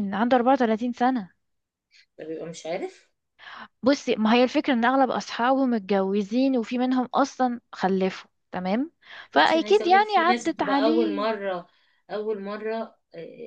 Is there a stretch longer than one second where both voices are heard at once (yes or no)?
yes